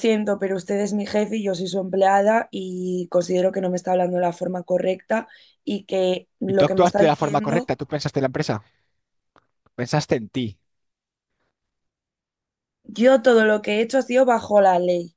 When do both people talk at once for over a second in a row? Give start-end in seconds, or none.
6.5-7.7